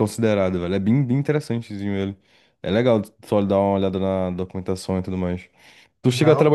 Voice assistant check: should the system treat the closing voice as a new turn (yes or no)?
no